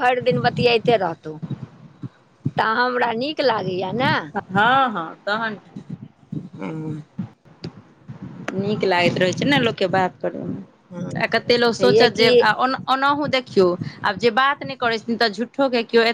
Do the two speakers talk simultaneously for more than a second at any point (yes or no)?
no